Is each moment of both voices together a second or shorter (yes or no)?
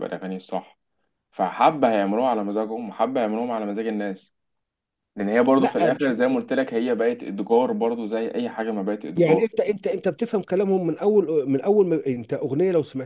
yes